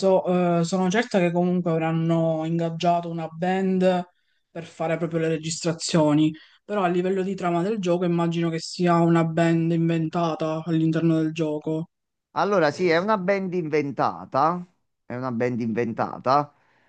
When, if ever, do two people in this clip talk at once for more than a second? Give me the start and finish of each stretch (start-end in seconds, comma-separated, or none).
none